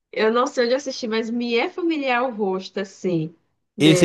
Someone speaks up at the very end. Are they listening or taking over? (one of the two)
taking over